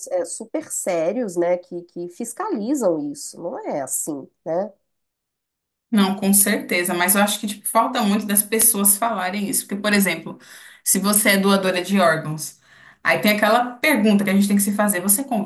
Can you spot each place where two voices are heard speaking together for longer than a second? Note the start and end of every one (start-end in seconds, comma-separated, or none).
none